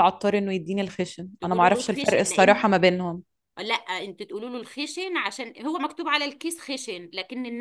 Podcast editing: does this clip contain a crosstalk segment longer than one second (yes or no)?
yes